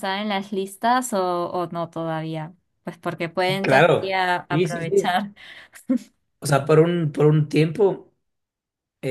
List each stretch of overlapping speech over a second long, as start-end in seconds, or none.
3.6-5.1